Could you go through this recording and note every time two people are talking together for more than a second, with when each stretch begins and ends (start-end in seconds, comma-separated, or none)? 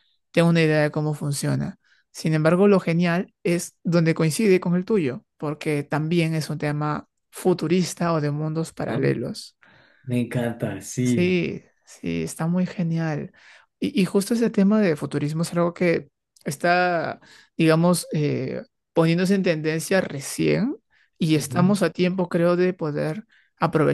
none